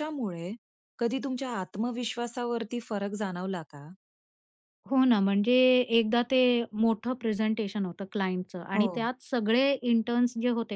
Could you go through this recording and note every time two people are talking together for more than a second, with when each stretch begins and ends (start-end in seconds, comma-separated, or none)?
none